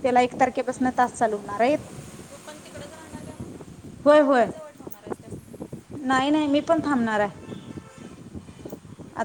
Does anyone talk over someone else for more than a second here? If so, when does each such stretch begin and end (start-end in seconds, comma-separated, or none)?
none